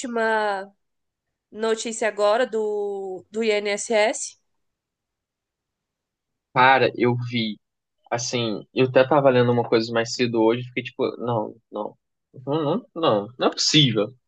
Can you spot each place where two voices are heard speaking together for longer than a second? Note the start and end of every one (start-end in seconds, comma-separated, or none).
none